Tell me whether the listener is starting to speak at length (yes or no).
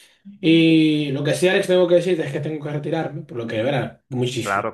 no